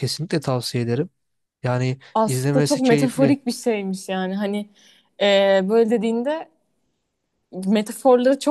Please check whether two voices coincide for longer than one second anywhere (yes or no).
yes